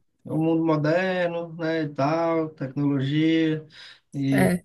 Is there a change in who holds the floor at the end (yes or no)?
no